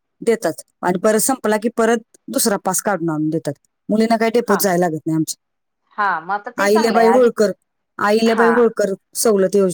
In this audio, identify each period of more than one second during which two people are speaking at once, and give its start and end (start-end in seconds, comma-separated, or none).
6.0-7.3